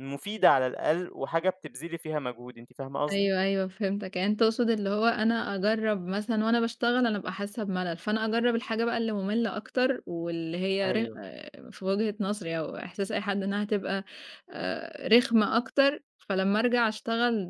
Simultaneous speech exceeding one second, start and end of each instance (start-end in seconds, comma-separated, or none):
none